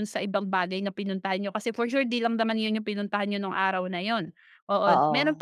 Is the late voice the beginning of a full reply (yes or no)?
no